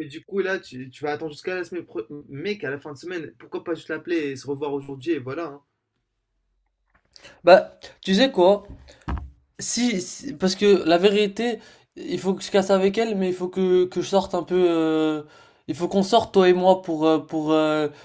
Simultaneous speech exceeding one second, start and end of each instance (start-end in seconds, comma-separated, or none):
none